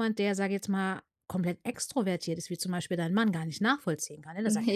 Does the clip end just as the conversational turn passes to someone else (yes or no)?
no